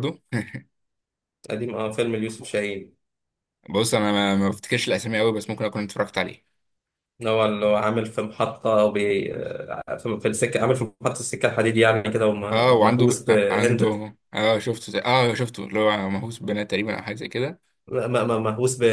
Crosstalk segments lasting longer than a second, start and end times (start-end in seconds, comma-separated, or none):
12.5-13.9